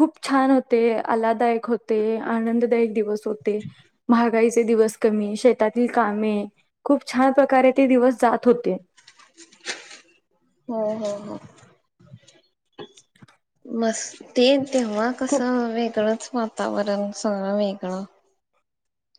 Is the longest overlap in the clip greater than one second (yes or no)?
no